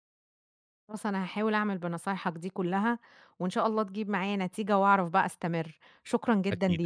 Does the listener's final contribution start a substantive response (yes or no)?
yes